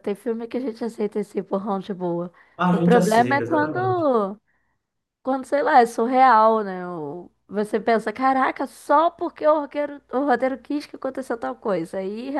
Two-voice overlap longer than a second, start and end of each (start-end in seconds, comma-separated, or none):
2.7-4.1